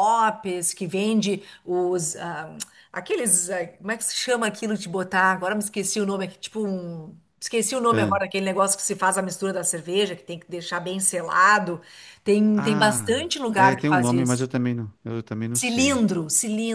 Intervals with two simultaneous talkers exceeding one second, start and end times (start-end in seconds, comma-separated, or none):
12.5-14.5